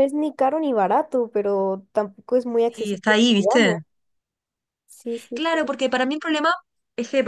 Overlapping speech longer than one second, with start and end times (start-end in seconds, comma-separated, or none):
2.5-3.8